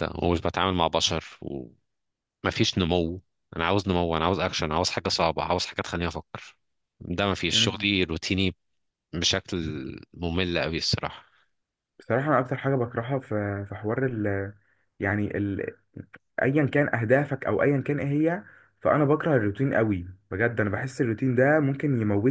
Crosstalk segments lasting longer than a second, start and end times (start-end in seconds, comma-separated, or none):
none